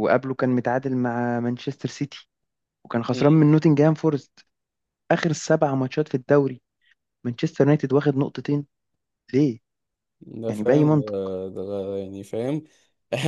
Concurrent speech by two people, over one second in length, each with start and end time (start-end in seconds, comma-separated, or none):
none